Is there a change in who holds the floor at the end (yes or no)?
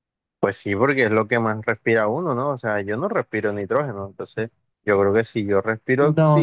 yes